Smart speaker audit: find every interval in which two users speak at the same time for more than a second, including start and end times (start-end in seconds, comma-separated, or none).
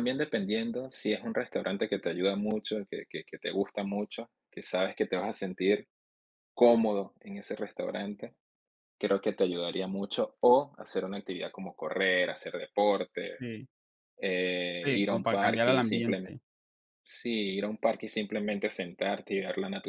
14.8-16.4